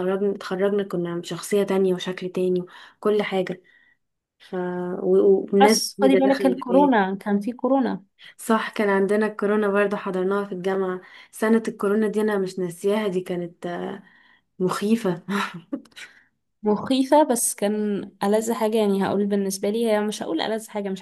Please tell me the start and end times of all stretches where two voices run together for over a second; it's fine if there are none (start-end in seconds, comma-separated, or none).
5.6-6.9